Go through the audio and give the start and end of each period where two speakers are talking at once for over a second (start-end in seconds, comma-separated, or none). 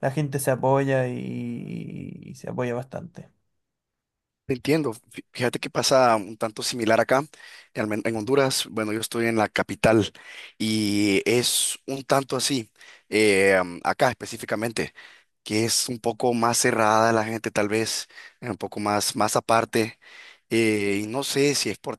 none